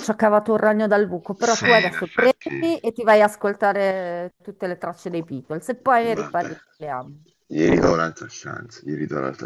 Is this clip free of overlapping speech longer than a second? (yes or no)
no